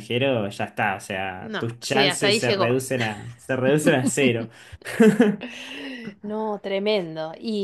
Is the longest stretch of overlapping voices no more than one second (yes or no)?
no